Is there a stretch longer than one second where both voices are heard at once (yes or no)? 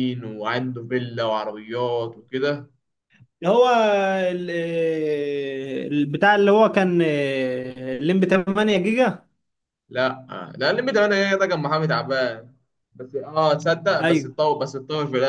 no